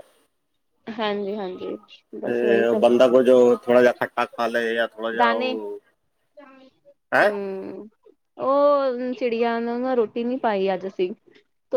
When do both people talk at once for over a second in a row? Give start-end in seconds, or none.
none